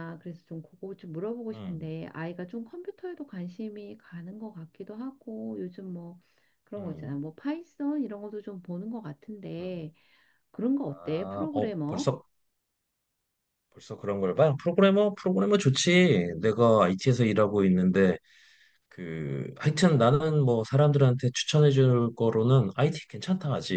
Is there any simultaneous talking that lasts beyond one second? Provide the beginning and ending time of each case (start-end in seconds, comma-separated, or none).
10.9-12.1